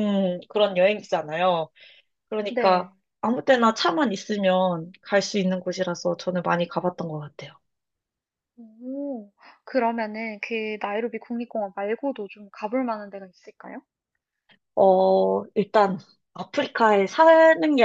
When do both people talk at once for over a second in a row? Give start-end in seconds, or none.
none